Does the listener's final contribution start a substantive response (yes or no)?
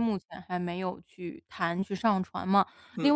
no